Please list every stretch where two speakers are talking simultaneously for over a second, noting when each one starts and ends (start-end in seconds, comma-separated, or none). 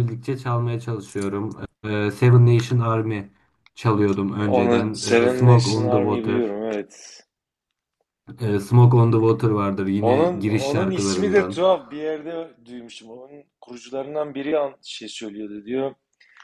4.5-6.6, 10.0-11.6